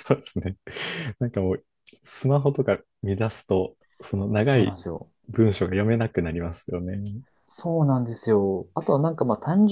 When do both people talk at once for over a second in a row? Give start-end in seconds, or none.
none